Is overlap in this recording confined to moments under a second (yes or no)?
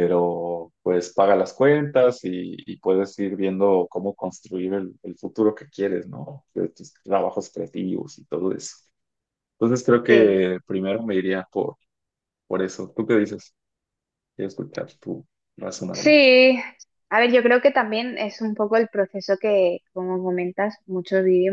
yes